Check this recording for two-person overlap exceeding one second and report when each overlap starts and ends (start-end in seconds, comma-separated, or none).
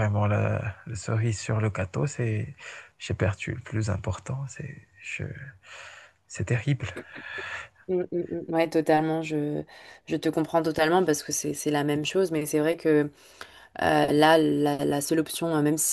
none